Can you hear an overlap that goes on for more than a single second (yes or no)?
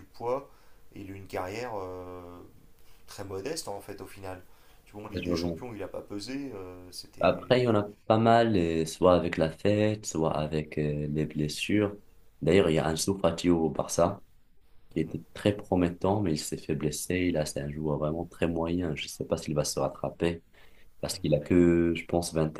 no